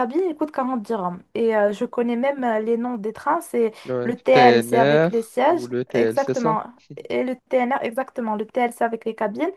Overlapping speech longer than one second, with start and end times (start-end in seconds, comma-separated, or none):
3.9-6.6